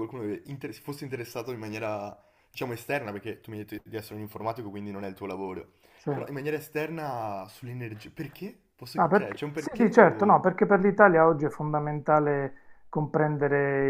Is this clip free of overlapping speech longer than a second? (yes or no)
no